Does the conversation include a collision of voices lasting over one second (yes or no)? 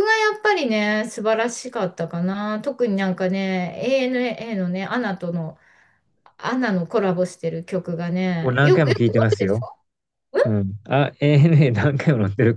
yes